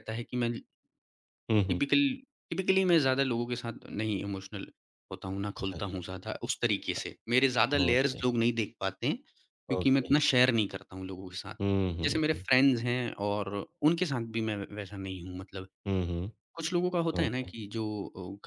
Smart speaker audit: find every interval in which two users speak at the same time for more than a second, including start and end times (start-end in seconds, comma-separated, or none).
none